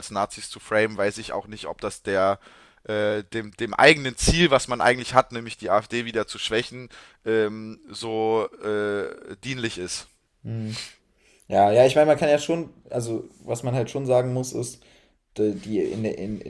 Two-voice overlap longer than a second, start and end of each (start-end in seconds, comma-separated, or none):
none